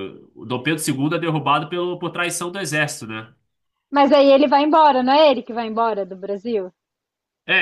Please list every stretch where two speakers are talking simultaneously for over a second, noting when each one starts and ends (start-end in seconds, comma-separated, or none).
none